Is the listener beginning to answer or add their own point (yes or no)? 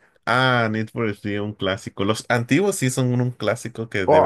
yes